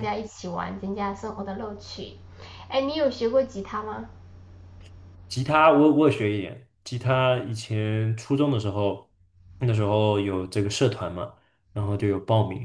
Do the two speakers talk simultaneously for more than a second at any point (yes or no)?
no